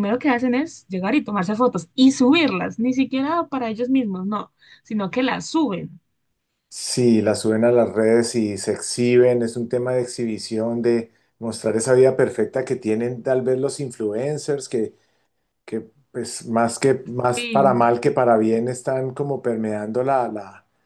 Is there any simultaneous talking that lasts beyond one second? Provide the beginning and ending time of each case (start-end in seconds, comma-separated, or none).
none